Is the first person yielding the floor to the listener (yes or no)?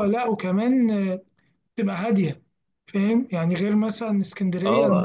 no